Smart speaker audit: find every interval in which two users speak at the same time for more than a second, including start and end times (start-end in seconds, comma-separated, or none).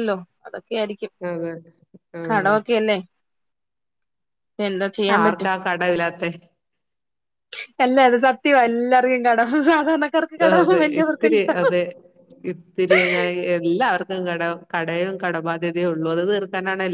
none